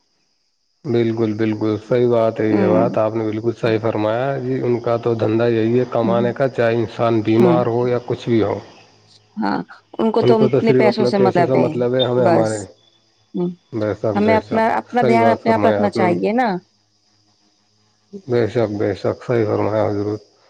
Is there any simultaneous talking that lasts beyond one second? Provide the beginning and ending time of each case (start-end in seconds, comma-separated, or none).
14.2-16.1